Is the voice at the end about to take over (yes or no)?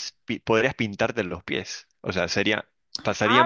no